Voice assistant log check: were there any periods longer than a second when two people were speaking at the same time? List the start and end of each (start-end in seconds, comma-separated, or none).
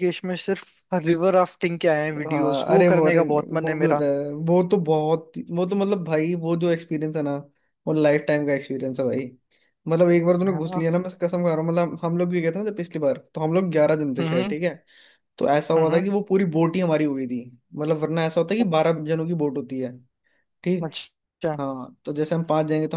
2.3-4.0